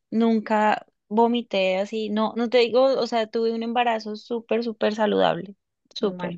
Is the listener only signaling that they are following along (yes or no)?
yes